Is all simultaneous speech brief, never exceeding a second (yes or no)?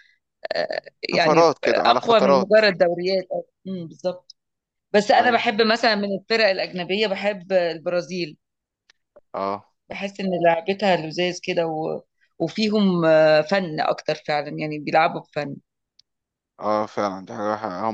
no